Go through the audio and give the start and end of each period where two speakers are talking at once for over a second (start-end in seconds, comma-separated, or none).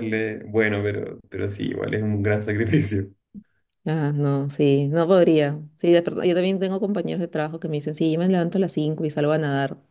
none